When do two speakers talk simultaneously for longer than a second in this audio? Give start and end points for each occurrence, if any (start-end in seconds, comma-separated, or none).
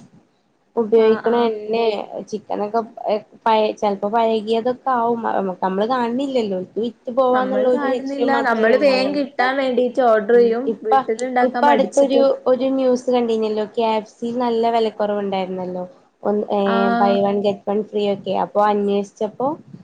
none